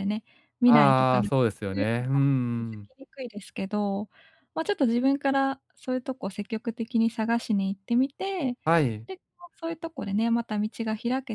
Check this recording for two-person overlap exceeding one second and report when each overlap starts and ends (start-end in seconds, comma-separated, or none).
0.6-2.8